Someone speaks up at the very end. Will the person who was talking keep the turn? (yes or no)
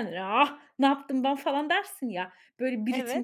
yes